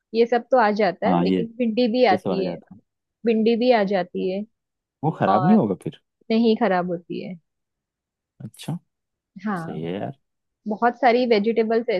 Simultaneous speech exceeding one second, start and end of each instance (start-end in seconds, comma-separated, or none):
none